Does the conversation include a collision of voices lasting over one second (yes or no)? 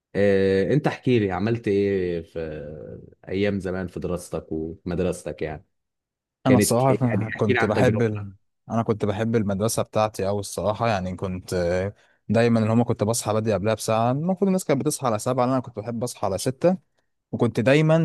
yes